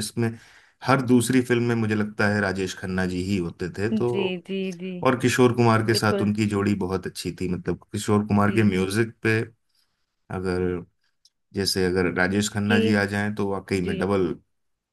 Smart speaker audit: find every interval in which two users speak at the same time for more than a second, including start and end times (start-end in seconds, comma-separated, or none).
none